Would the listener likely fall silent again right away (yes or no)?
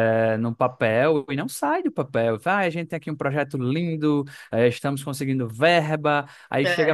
yes